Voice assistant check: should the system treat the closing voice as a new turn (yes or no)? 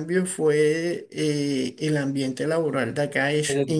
no